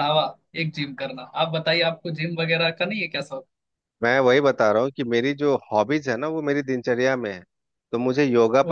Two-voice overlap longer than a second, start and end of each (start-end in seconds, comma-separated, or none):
none